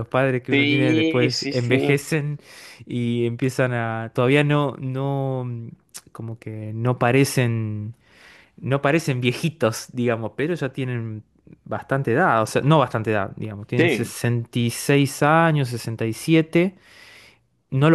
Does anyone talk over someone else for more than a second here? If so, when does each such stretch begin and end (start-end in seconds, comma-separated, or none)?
0.5-2.0